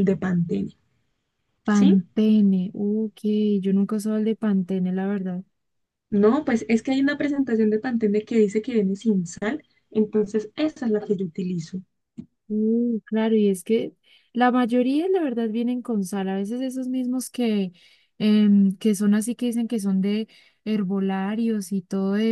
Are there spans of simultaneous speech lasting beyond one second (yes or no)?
no